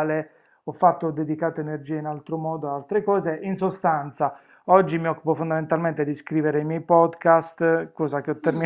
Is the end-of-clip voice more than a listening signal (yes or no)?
no